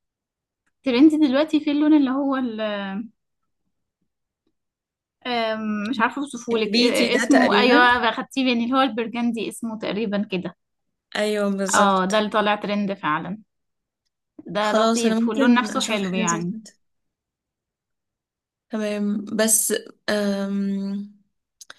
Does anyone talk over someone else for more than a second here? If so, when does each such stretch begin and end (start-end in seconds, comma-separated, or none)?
6.5-7.9, 14.6-16.5